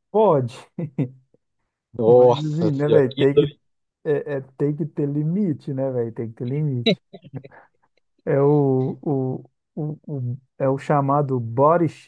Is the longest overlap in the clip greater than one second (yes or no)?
yes